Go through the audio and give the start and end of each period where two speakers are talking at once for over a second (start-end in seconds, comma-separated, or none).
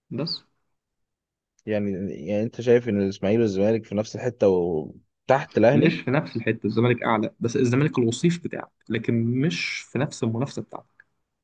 none